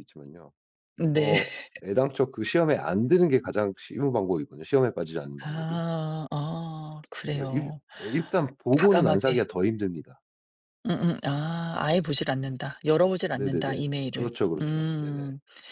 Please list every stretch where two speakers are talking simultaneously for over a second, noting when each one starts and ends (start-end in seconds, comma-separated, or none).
13.3-15.2